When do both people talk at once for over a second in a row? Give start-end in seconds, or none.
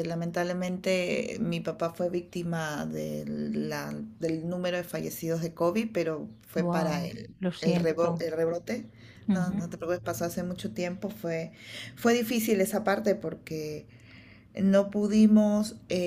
6.6-8.2